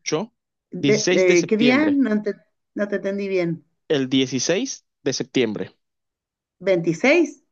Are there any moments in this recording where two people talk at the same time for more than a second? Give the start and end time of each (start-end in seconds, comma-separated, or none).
0.8-2.0